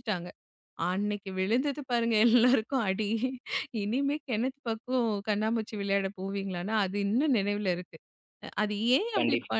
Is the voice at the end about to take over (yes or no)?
no